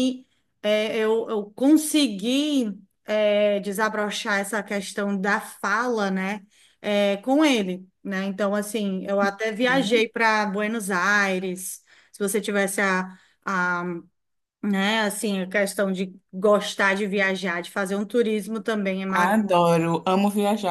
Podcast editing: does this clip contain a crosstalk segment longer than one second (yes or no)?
no